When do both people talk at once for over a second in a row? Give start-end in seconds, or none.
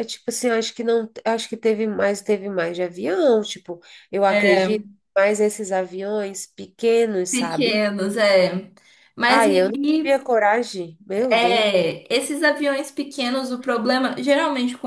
none